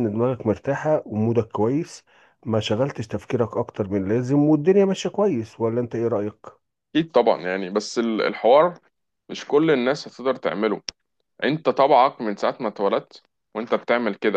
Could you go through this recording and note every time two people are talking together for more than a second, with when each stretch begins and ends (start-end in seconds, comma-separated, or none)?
none